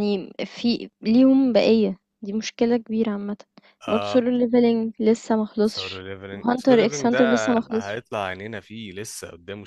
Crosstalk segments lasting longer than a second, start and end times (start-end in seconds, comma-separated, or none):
5.6-8.0